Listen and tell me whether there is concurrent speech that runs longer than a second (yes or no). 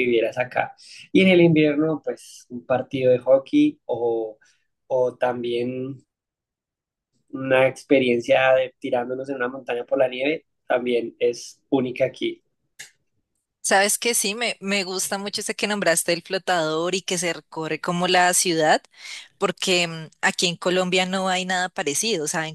no